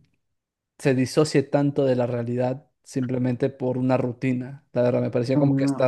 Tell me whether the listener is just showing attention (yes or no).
no